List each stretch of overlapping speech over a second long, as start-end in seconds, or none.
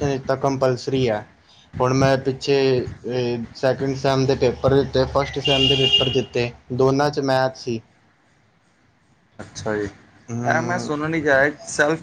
none